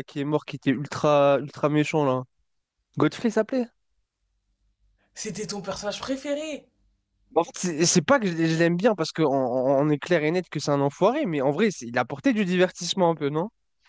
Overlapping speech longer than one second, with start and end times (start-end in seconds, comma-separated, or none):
none